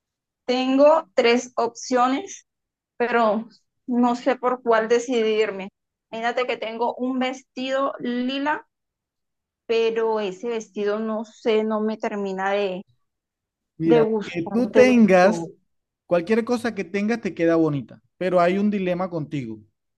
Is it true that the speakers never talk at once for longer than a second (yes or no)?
no